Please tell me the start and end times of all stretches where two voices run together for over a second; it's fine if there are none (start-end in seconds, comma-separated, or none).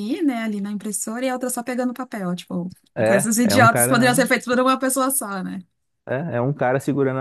3.0-4.3